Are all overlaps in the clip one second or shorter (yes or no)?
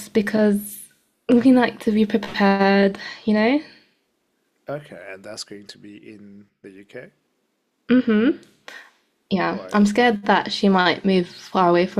yes